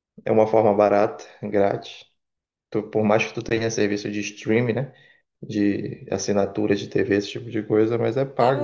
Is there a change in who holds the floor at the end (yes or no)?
yes